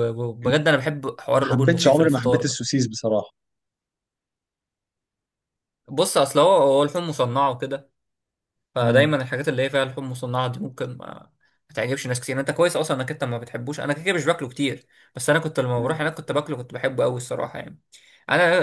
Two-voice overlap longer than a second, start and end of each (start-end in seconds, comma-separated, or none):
1.4-2.6